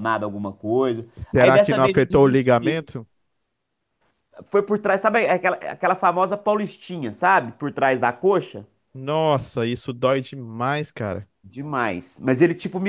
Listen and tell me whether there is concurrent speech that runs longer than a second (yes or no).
yes